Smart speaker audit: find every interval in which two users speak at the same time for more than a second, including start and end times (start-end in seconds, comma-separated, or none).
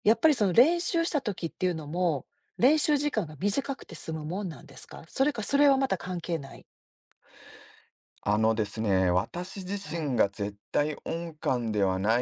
none